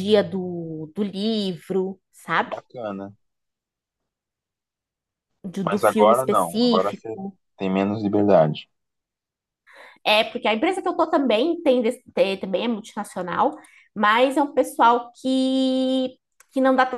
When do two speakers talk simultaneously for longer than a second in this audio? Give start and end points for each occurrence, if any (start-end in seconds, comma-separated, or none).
5.6-7.0